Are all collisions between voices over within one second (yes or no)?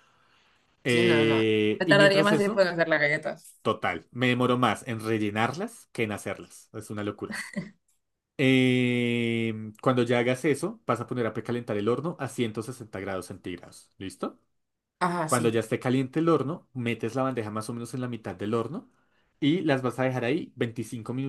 no